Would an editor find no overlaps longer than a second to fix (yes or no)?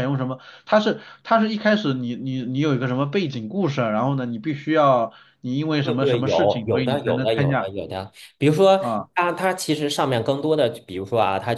no